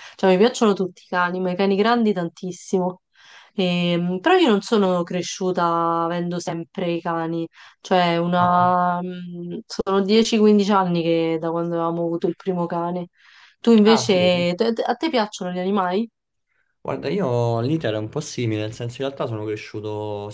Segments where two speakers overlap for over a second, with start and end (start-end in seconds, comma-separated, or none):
none